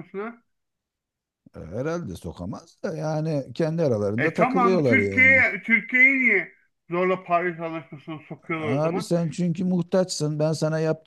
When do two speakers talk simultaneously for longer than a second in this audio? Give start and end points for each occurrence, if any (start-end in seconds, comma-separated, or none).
4.2-5.4